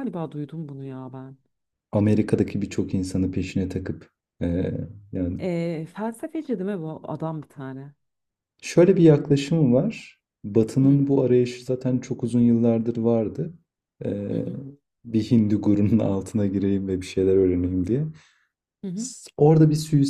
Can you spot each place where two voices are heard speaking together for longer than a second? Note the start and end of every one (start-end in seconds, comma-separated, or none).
none